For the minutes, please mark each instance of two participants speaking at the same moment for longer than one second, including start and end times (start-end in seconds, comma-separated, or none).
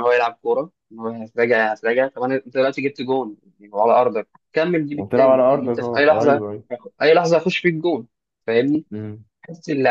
4.9-6.4